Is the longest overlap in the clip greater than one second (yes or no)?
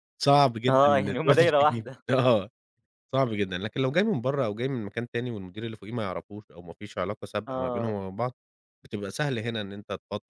yes